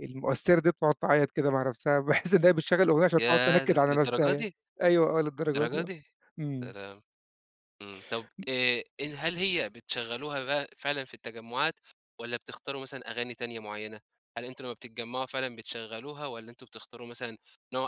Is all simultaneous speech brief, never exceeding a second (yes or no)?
no